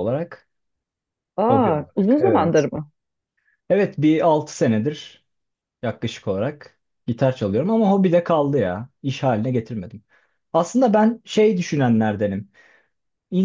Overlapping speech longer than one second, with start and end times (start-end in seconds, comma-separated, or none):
1.5-2.7